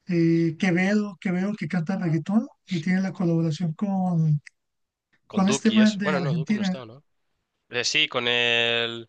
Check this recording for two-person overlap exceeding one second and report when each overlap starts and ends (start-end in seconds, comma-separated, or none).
5.3-6.8